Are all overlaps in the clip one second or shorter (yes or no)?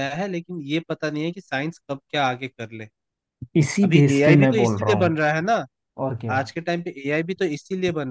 no